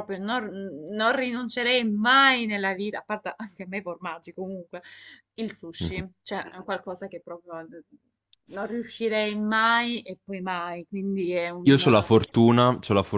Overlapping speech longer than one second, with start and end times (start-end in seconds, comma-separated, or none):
none